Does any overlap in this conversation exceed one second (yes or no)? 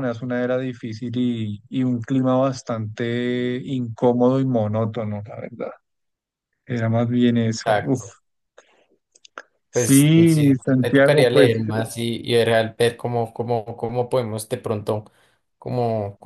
yes